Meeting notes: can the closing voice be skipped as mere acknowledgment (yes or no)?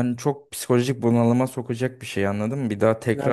yes